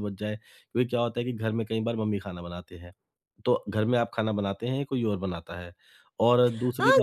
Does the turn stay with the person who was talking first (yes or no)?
no